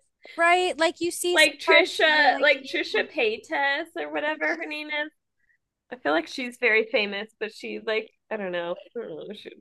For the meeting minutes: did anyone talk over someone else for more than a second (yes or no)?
yes